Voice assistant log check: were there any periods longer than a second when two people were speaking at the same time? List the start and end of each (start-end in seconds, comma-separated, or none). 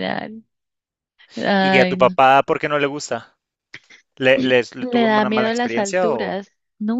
4.8-6.4